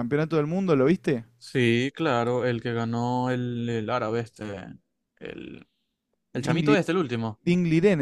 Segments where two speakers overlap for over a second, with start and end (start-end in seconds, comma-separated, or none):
none